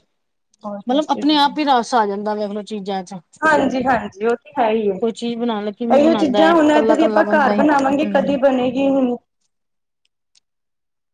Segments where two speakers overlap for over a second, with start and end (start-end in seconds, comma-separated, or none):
6.0-8.3